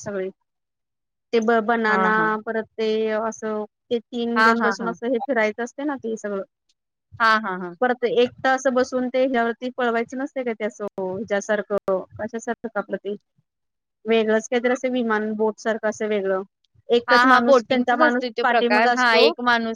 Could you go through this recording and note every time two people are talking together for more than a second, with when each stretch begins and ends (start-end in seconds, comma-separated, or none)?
17.1-19.2